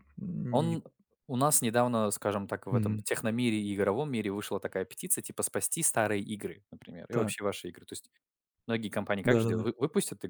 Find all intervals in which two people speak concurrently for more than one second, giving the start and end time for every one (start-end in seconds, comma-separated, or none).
none